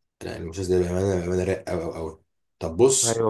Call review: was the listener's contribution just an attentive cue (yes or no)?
yes